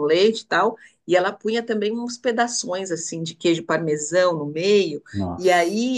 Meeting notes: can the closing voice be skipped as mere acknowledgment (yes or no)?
yes